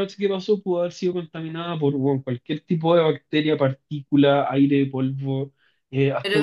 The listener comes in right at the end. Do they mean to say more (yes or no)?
yes